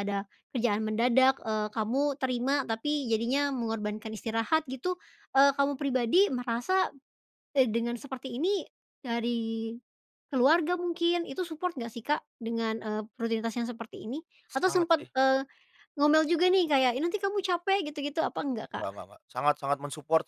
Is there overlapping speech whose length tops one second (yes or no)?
no